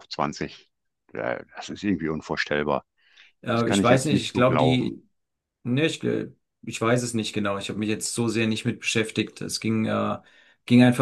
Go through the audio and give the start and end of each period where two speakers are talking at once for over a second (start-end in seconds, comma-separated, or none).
3.5-5.0